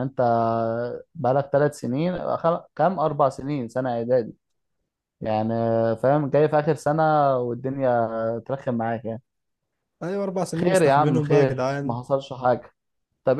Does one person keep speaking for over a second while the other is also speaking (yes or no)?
yes